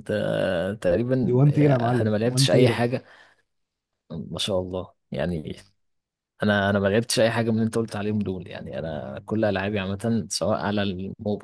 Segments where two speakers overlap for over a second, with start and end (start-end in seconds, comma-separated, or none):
1.2-2.8